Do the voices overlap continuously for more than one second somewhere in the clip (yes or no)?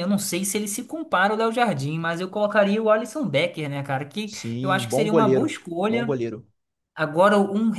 yes